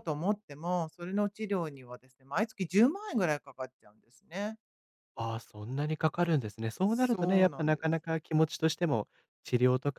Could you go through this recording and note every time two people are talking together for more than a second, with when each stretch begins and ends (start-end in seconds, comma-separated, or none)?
6.8-8.1